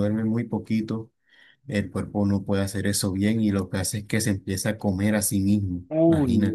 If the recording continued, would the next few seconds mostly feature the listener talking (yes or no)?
yes